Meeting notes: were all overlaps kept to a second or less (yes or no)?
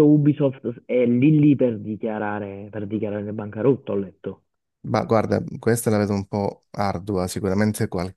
yes